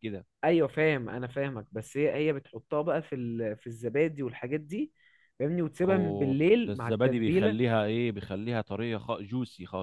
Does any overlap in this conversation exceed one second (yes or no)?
yes